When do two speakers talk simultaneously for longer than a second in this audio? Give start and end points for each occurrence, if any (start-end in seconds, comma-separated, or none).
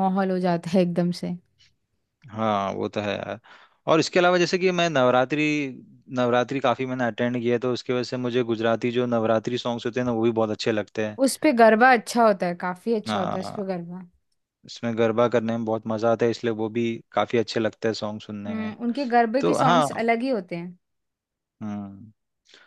none